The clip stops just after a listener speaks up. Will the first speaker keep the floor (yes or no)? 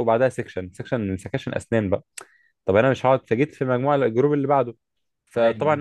yes